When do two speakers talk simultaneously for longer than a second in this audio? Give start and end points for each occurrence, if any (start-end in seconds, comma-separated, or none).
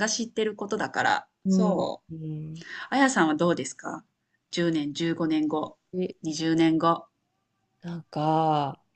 none